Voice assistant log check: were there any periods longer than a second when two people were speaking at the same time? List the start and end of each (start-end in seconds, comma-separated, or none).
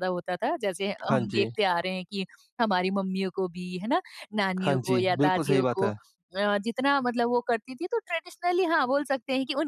4.5-5.9